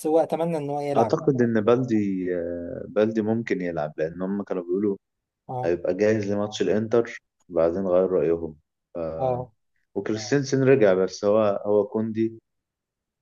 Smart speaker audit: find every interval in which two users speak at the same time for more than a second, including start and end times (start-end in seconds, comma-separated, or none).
none